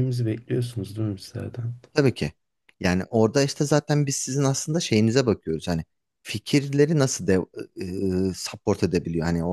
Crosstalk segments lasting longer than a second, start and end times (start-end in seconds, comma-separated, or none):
none